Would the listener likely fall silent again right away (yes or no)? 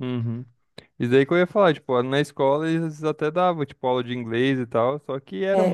no